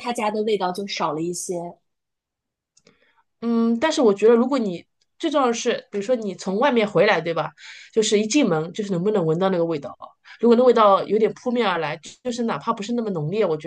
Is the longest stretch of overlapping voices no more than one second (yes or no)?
yes